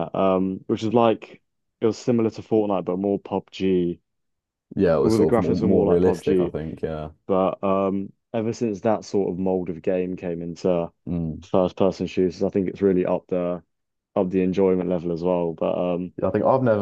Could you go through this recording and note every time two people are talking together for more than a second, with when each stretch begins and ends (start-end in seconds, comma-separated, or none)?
5.0-6.5